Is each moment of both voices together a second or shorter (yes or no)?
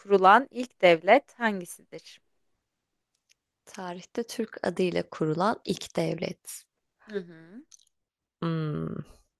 yes